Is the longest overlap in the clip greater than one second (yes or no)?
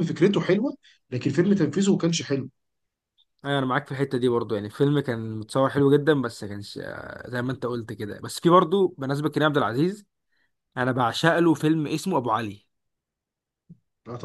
no